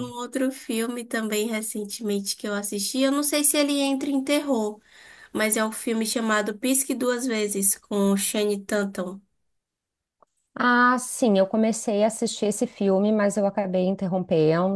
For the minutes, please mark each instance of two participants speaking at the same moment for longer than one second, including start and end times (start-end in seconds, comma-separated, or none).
none